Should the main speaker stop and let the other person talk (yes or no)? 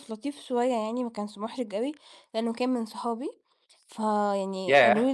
yes